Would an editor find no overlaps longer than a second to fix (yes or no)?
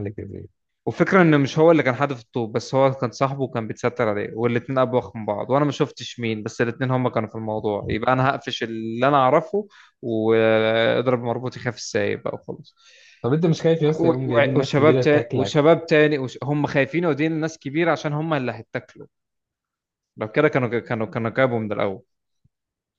no